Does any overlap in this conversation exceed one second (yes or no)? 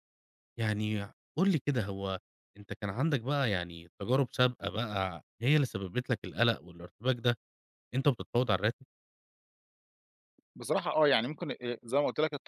no